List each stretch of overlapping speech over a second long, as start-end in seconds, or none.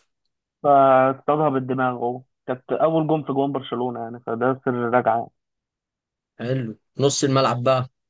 none